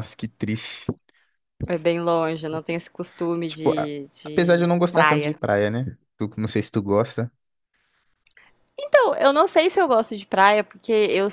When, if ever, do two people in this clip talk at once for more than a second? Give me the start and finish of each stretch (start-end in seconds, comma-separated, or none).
3.4-5.4